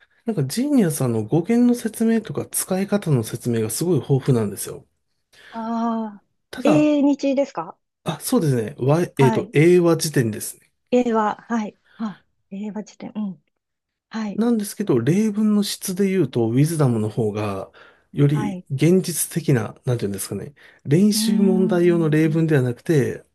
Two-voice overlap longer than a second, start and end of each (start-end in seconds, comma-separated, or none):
21.1-22.5